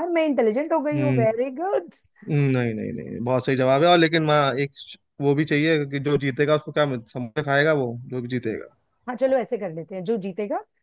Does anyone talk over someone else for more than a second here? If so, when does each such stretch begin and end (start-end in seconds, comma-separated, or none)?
none